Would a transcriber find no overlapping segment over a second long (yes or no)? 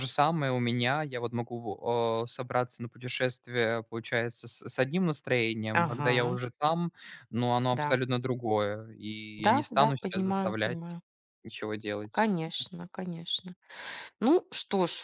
no